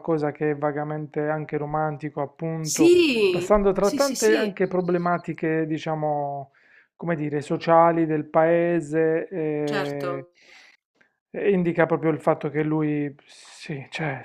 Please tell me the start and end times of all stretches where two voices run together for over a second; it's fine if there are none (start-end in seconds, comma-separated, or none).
2.6-4.6